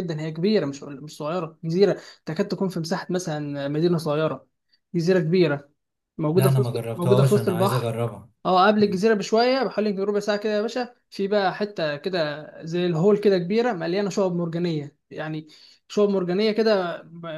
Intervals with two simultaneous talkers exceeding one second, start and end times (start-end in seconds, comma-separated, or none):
6.3-7.9